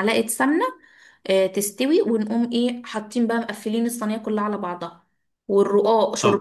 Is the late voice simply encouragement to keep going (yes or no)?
yes